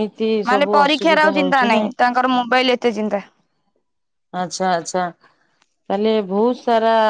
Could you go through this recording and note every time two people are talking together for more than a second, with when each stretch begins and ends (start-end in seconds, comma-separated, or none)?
0.5-1.9